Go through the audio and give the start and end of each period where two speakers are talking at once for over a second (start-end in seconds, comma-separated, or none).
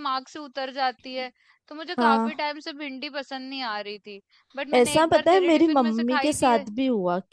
4.7-6.5